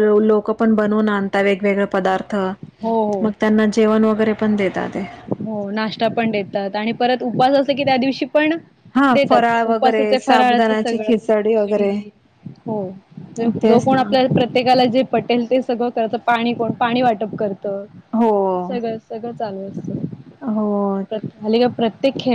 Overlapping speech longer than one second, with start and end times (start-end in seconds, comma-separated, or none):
9.1-11.1